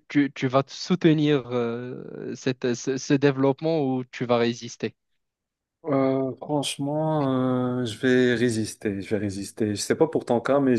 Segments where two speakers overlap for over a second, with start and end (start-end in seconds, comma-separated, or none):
none